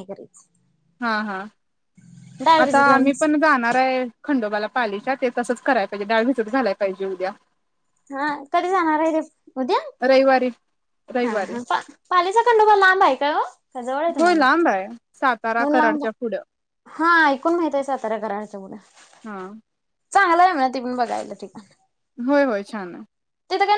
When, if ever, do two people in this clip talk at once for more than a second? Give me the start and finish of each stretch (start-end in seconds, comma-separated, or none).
14.2-16.0